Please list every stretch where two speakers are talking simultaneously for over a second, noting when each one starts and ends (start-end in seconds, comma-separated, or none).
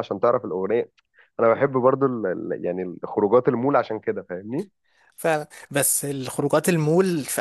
none